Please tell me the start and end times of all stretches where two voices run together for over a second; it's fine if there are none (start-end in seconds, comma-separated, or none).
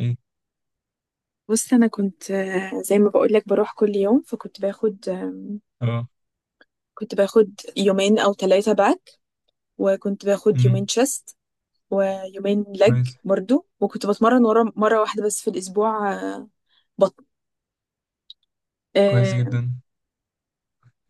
none